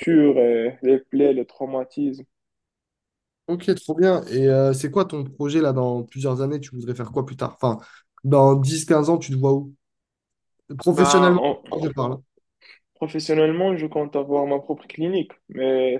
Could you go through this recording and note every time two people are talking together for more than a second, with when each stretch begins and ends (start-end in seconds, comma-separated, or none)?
none